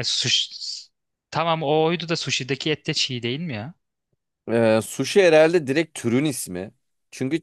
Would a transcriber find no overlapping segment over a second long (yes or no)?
yes